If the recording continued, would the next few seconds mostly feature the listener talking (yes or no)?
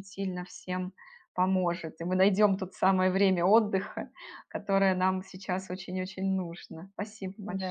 yes